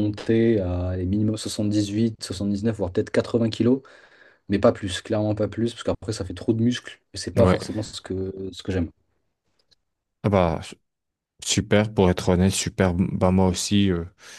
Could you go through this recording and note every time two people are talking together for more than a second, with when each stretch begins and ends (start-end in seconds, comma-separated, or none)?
none